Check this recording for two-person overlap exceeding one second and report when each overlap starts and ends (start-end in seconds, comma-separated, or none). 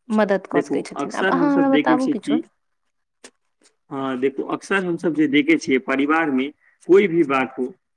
0.6-2.4